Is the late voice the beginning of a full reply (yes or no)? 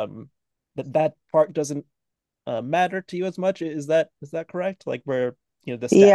yes